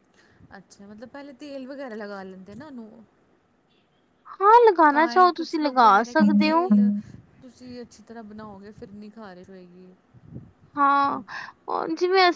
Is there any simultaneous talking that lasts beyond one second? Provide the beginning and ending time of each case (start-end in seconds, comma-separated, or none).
4.9-6.7